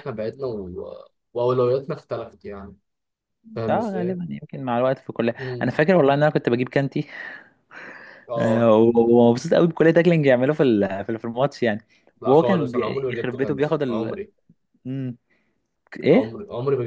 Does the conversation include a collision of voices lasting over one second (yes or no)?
yes